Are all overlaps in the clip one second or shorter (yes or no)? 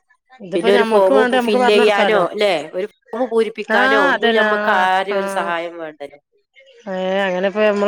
no